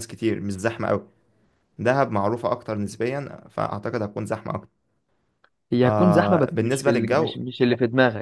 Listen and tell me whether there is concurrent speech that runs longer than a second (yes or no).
yes